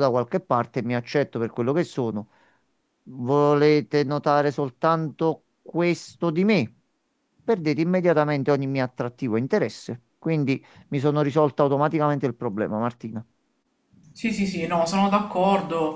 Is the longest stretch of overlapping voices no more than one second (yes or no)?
yes